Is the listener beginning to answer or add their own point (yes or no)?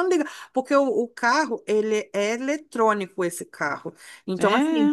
no